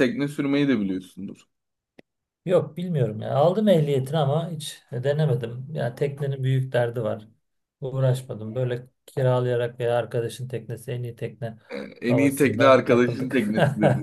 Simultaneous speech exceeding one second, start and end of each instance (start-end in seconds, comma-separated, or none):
12.1-13.5